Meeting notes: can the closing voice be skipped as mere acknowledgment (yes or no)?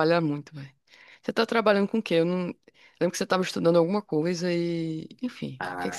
no